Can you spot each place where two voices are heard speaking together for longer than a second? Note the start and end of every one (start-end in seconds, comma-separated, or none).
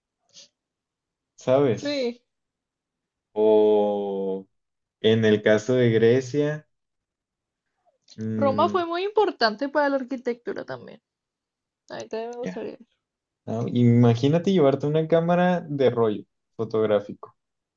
none